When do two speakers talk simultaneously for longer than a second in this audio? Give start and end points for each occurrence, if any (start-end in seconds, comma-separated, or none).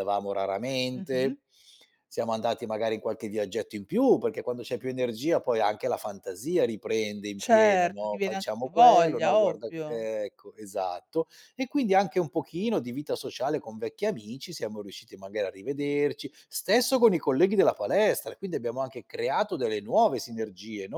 7.4-10.0